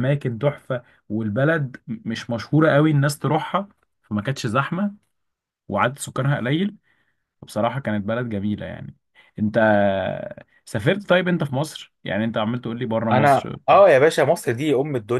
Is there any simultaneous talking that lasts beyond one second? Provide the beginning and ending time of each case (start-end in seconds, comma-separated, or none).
none